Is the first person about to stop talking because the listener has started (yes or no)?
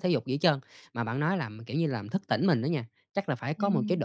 no